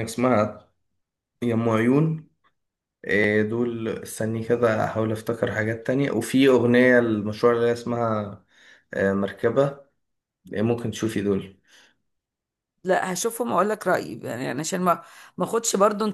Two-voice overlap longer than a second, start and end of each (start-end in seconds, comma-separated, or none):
none